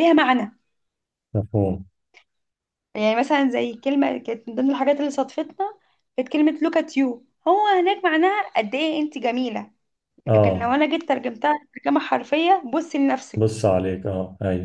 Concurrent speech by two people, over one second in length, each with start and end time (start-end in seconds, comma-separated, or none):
none